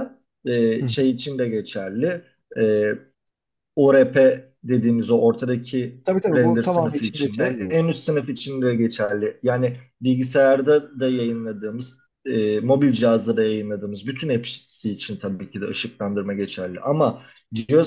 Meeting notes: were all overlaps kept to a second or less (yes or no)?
no